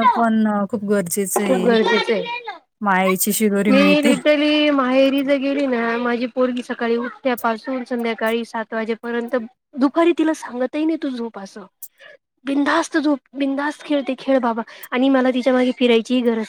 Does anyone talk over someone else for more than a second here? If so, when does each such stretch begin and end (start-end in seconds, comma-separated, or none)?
none